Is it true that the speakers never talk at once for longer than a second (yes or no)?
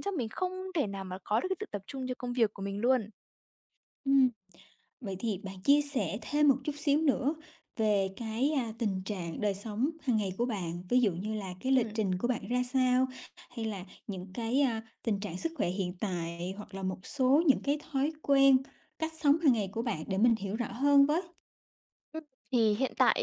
yes